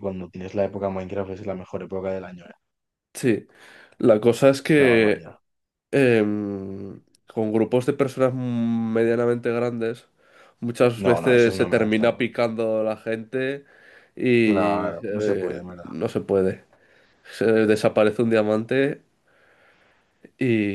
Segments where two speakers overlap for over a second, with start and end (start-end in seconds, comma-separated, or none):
11.0-12.3, 14.4-15.9